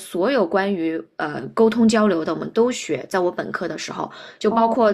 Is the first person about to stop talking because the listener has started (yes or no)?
no